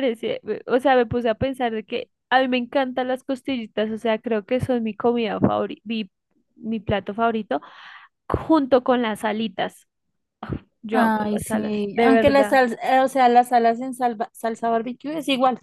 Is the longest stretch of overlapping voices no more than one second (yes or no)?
no